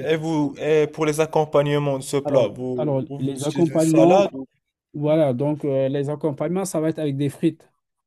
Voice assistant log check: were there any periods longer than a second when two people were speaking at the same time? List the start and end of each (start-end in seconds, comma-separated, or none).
2.2-4.4